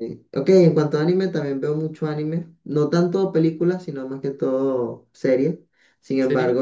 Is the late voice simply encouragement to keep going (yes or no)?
yes